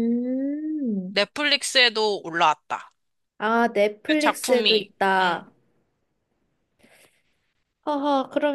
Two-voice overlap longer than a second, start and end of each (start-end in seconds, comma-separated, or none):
4.1-5.4